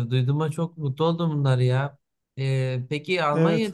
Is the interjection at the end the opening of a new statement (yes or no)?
no